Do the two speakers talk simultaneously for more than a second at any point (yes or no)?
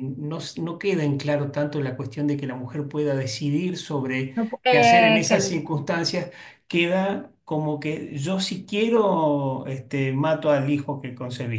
yes